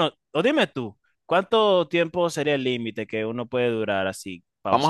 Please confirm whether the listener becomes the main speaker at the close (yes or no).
yes